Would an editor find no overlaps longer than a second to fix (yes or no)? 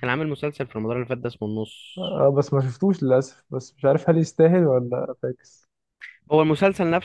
yes